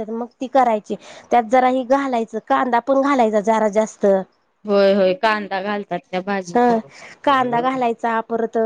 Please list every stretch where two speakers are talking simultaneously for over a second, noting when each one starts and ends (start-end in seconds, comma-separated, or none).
none